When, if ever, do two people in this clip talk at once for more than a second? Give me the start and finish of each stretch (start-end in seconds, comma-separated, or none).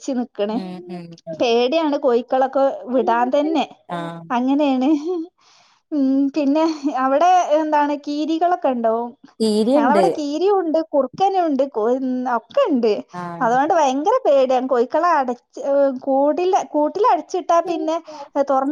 none